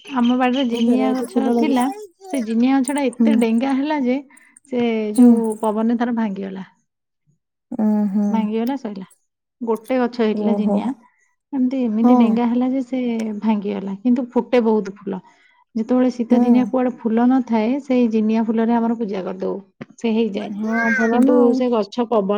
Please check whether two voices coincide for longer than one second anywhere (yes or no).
no